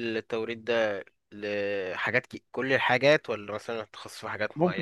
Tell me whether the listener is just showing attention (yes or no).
no